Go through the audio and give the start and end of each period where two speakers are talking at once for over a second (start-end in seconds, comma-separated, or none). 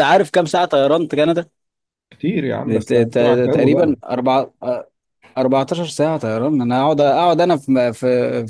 2.6-4.0